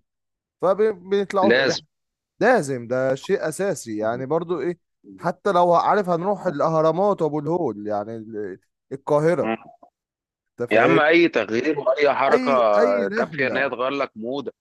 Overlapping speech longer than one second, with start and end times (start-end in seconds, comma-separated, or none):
none